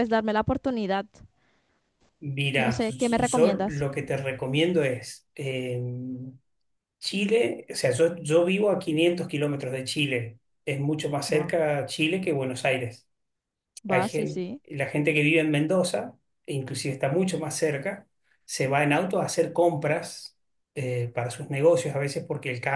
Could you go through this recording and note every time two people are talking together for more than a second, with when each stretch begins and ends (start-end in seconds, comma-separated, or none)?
2.6-3.9